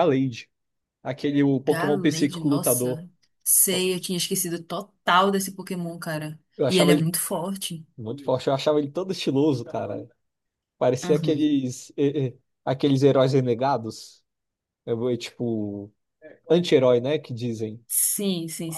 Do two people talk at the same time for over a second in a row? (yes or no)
yes